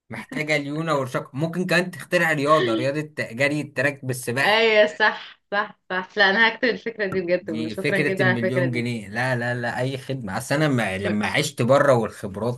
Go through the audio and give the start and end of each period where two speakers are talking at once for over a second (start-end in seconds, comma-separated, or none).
7.4-8.8